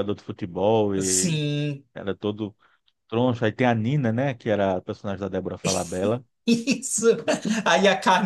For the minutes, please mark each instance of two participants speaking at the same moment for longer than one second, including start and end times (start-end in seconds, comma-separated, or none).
none